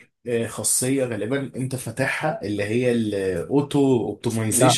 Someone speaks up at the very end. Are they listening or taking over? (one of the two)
listening